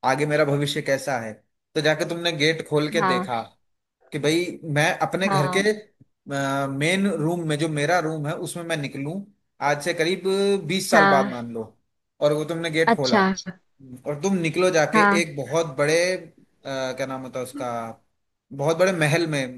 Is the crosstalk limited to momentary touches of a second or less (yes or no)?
yes